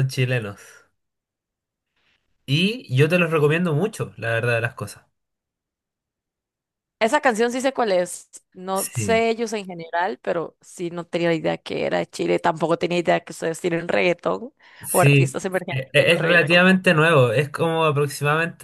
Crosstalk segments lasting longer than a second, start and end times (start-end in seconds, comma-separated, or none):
14.9-16.6